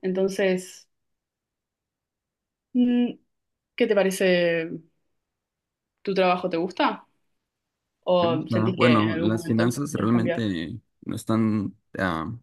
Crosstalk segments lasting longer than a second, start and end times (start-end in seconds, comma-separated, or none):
8.2-10.4